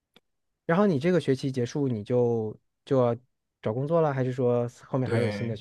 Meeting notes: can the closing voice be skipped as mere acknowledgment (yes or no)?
no